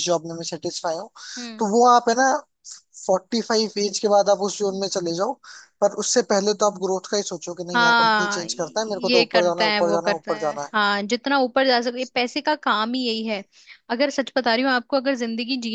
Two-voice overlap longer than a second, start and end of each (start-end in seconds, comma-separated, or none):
7.7-10.9